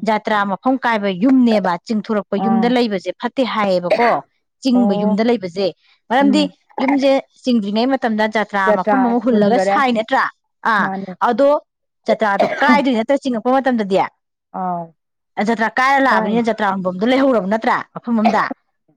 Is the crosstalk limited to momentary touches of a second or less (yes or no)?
yes